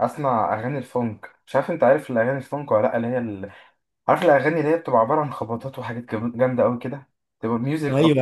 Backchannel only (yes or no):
no